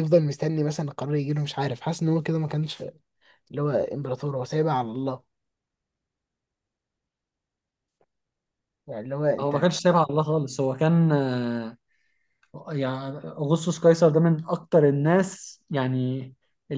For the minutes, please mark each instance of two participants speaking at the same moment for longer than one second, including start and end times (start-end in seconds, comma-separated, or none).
none